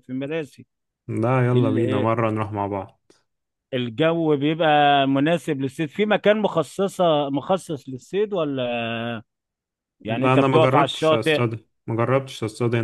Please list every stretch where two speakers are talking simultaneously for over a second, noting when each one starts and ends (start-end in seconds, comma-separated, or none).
10.1-11.4